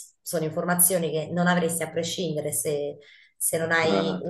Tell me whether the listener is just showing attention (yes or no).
yes